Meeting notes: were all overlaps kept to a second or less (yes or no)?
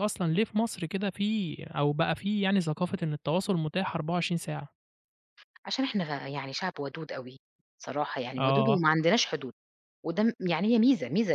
yes